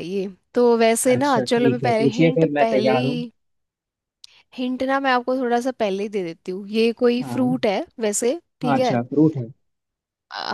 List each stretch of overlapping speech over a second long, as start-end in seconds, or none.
1.1-3.2